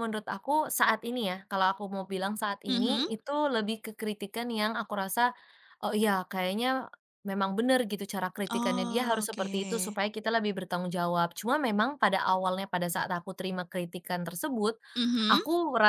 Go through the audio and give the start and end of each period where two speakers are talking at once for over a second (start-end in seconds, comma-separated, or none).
8.5-10.0